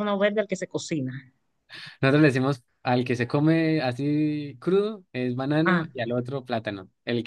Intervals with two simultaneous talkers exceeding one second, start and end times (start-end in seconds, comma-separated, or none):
none